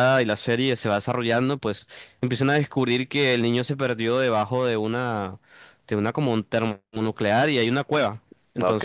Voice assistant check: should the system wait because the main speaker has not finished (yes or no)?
yes